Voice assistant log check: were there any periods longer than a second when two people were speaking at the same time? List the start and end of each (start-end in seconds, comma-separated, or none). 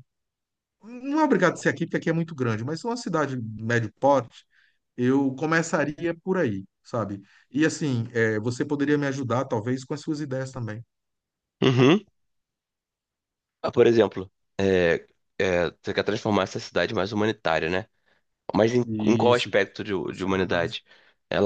18.9-20.8